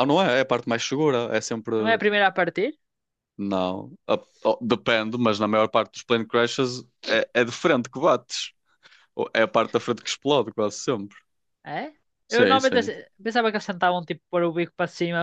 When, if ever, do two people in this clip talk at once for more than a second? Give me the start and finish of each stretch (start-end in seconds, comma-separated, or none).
none